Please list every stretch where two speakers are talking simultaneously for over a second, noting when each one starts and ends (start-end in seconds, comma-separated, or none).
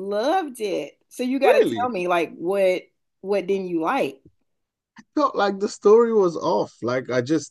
none